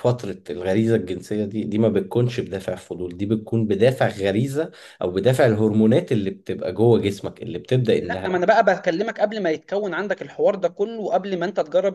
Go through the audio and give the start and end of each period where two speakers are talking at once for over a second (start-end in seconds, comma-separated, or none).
none